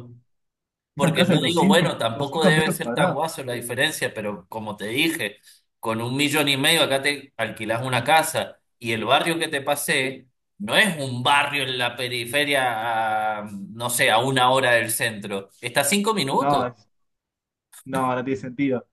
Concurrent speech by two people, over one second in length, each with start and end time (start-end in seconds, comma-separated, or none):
1.0-3.7